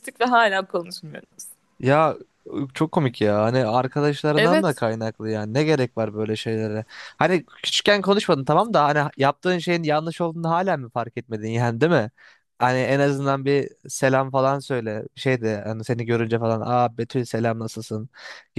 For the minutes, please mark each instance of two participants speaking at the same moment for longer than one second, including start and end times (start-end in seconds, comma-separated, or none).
none